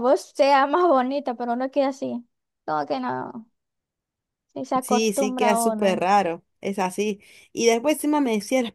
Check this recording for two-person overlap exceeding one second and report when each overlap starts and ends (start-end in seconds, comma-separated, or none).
4.8-6.0